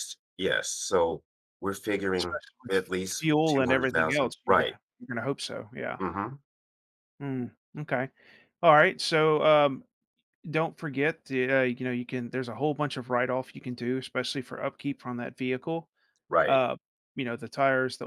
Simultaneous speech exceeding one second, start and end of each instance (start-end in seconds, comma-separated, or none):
2.2-4.8